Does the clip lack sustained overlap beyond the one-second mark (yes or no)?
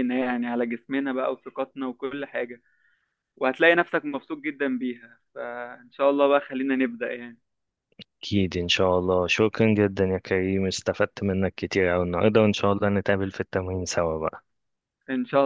yes